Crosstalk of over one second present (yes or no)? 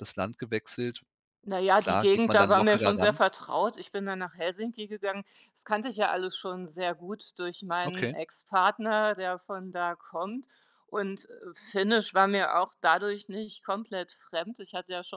yes